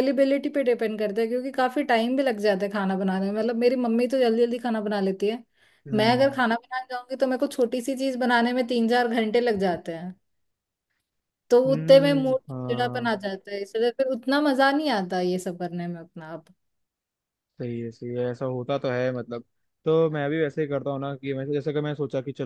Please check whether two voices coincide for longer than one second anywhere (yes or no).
yes